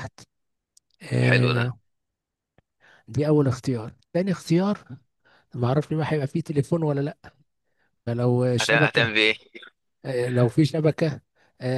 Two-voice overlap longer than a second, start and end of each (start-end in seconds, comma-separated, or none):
none